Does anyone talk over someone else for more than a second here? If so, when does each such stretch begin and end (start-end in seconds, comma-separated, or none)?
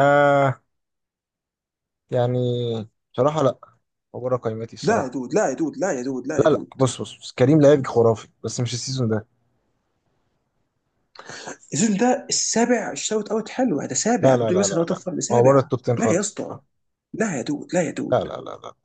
14.2-16.6